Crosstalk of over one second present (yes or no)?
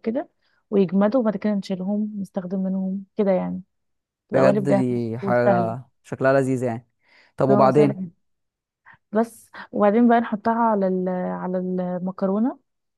yes